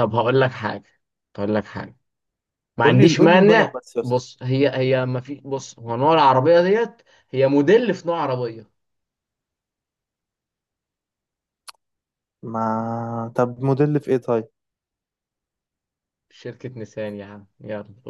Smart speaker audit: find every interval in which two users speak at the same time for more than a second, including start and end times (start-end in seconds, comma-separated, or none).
2.8-4.3